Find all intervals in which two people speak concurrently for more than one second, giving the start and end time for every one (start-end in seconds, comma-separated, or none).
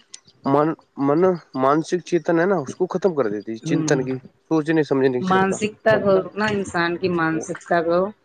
5.3-7.4